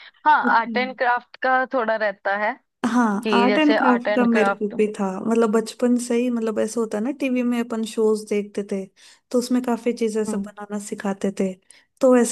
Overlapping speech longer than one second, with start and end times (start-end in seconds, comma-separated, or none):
3.2-4.7